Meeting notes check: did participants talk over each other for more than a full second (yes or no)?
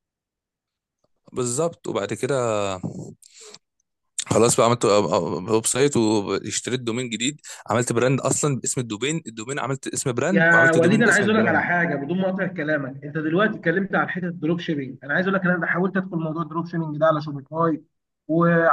yes